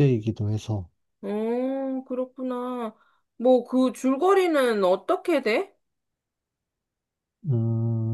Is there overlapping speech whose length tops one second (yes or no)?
no